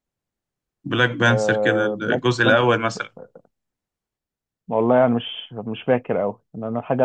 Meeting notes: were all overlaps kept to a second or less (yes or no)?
no